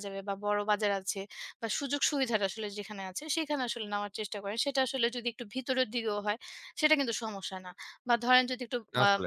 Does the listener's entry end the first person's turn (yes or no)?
no